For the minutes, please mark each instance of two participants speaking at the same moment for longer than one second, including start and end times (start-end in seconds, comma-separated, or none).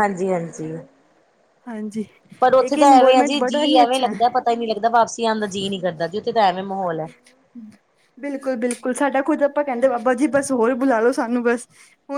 2.7-4.3